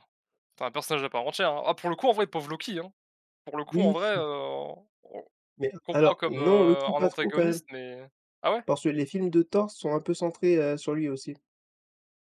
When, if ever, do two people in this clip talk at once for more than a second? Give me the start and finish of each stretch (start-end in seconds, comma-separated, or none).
5.8-7.6